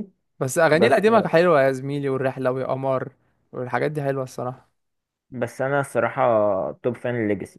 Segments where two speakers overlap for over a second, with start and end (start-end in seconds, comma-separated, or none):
none